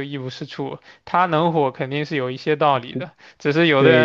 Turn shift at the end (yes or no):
no